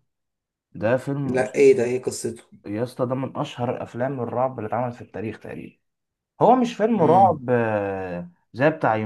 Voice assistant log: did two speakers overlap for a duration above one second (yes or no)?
no